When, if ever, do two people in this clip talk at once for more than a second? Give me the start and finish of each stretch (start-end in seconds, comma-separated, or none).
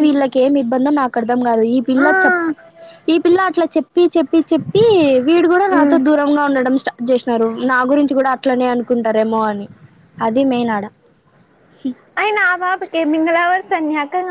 none